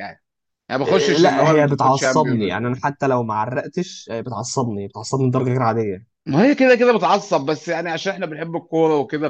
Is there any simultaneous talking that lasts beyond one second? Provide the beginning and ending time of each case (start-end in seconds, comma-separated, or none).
0.9-2.8